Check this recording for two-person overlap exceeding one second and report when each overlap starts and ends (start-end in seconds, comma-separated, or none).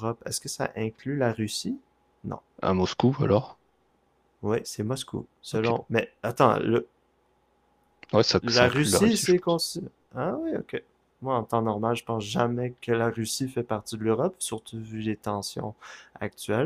8.4-9.6